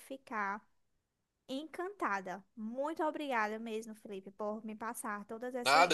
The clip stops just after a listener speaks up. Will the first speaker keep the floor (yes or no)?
no